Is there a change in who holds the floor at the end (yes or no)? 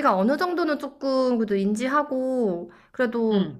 no